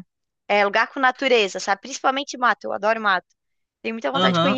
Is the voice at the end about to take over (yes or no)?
yes